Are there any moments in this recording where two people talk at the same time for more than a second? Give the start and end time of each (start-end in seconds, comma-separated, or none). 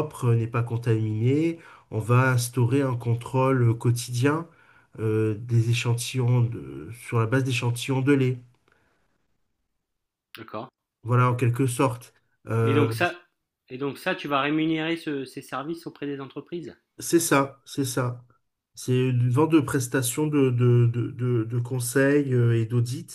none